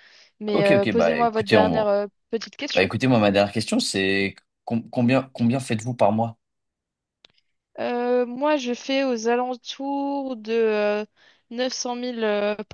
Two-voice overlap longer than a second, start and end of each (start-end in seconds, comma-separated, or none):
0.5-1.9